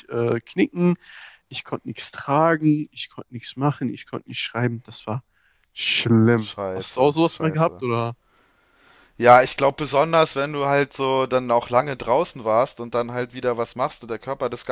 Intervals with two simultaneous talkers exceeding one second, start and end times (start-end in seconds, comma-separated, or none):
6.3-7.8